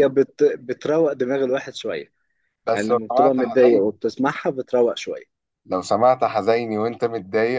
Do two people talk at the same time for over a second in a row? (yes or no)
yes